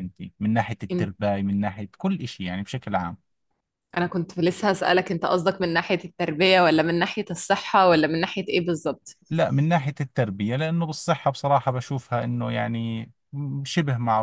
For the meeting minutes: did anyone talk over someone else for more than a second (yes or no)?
no